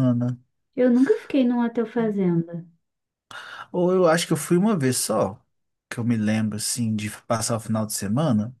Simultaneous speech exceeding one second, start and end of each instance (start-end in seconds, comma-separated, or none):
none